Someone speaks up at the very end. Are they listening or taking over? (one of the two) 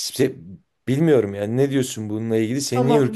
taking over